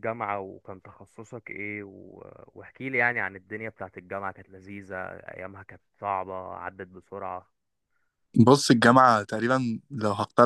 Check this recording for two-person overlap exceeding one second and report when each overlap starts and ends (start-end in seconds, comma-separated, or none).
none